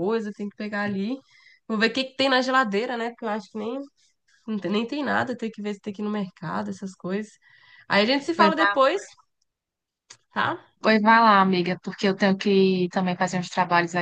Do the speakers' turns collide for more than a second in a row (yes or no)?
no